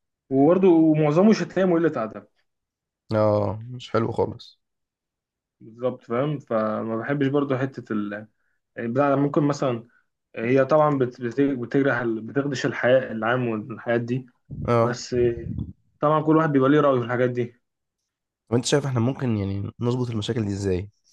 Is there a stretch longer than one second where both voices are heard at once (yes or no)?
no